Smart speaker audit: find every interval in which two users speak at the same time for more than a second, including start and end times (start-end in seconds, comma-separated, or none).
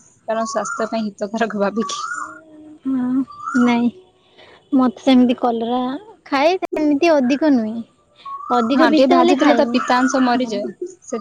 8.8-10.5